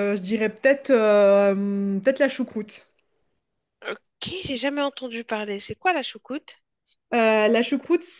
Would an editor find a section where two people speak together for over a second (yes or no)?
no